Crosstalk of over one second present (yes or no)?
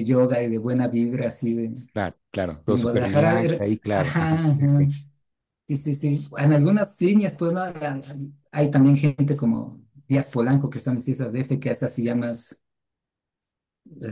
yes